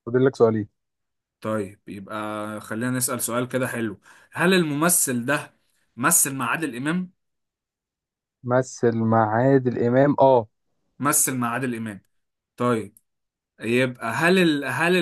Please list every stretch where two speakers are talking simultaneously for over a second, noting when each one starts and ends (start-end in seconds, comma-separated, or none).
none